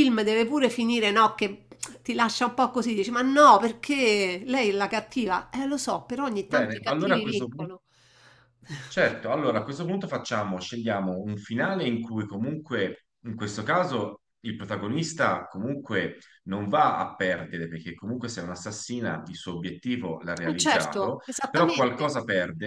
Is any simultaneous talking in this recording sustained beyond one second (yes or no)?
yes